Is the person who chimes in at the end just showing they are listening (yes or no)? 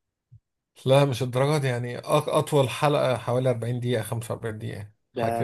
no